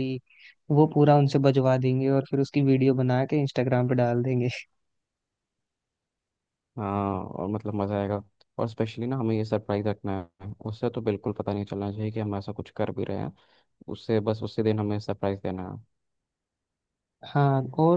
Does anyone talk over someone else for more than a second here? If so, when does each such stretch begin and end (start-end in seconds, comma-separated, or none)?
none